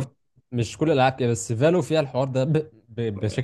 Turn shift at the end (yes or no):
no